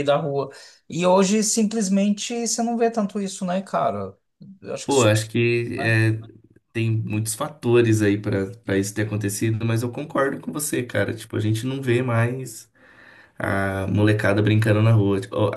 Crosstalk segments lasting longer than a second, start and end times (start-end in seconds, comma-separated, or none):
none